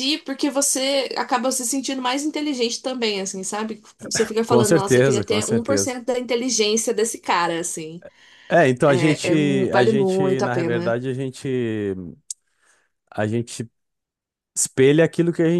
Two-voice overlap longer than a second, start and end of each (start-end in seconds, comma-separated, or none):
4.5-6.0, 8.8-11.0